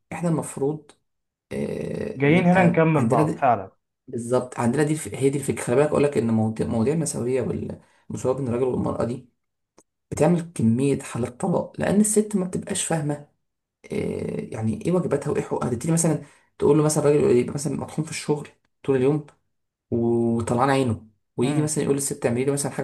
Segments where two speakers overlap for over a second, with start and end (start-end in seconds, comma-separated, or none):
2.2-3.5